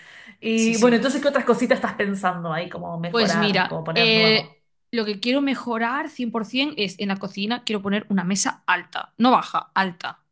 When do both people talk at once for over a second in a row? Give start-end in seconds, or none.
3.1-4.6